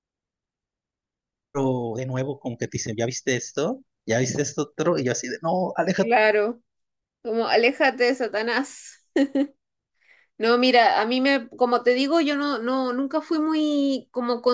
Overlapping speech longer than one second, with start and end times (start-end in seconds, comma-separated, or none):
none